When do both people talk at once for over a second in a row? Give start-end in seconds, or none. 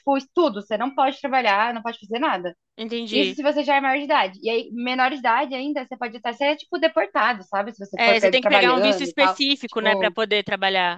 8.0-10.2